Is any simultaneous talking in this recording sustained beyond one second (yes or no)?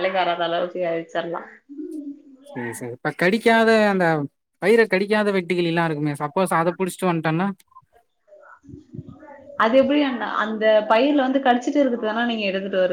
no